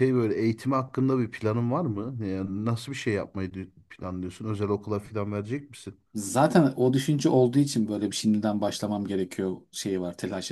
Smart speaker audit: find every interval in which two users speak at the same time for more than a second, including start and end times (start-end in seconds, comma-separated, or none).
none